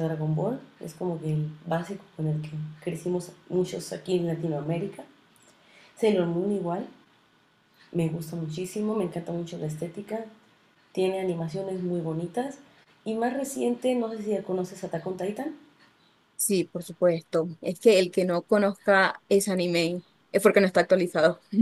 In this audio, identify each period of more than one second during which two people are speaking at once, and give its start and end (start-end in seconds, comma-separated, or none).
none